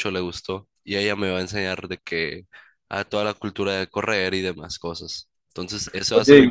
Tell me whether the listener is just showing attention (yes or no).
yes